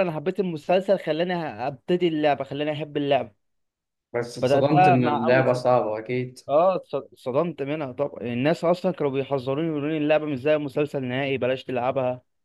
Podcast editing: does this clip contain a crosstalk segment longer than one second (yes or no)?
yes